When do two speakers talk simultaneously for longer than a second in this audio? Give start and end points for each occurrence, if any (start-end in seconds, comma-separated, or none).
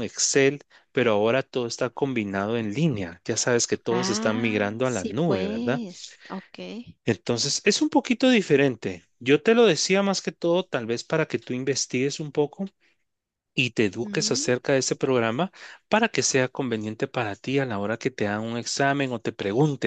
3.9-5.8